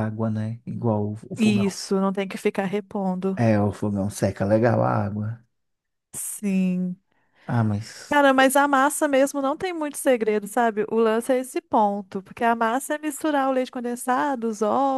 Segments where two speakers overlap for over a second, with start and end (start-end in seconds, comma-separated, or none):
none